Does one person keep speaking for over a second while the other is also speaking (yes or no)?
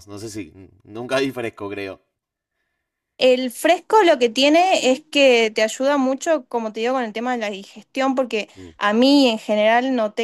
no